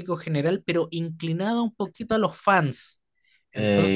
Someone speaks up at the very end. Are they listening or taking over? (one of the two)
taking over